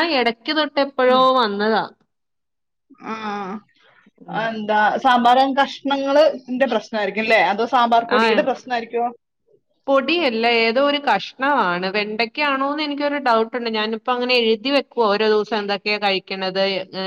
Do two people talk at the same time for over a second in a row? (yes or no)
no